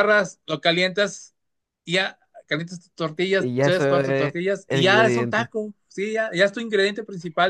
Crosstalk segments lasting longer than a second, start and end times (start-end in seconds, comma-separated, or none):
3.3-5.5